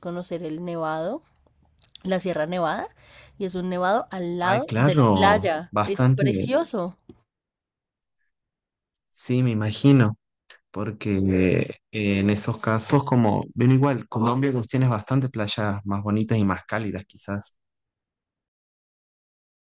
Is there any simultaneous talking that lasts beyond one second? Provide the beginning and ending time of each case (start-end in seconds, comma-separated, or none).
4.4-6.3